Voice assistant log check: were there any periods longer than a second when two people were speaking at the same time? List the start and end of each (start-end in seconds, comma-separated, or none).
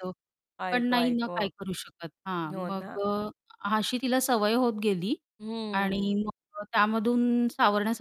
none